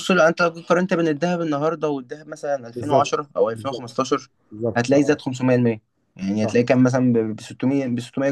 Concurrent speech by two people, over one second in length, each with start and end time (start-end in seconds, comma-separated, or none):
2.7-4.0